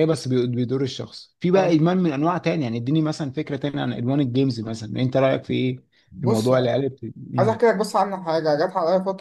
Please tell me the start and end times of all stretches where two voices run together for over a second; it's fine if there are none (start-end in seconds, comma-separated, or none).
none